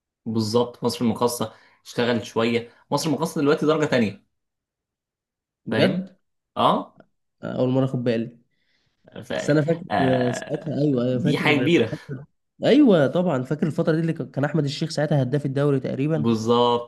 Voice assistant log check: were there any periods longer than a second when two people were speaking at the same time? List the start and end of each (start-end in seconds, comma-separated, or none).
10.3-11.9